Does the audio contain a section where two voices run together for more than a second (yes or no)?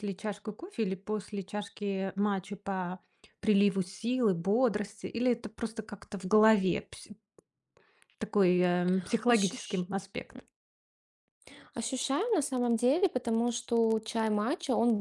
no